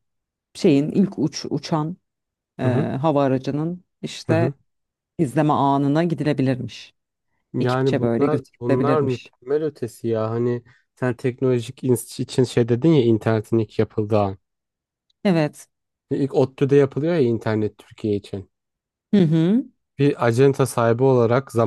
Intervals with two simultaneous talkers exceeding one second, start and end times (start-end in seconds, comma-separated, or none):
7.6-9.3